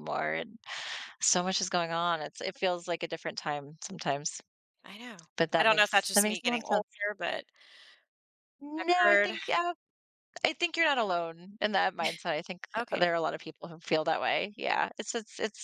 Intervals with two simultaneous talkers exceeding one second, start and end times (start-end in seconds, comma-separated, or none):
5.4-6.9